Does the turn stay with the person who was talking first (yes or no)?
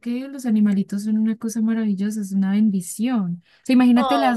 yes